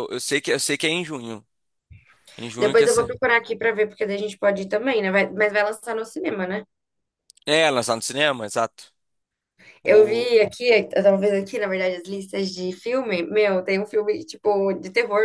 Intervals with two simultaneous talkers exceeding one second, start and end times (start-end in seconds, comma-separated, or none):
none